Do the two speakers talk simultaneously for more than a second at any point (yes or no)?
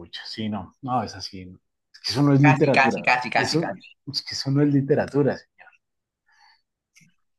yes